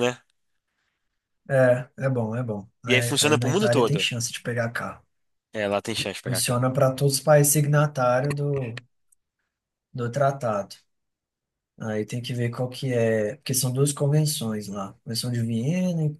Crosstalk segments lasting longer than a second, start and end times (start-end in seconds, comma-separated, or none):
2.9-4.1